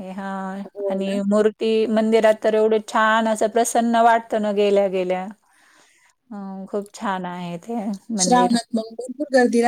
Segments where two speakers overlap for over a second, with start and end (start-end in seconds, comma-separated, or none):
none